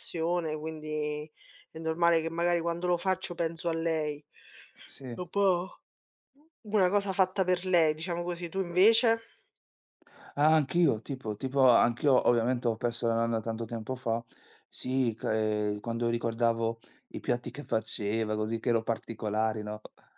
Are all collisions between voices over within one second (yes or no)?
yes